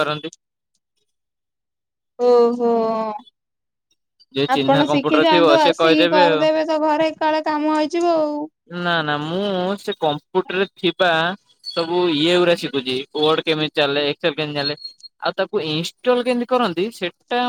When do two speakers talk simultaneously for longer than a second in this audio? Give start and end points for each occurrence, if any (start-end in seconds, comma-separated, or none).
4.5-6.5